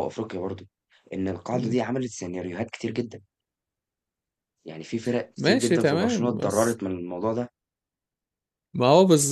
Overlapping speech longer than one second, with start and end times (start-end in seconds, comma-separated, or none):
5.4-6.8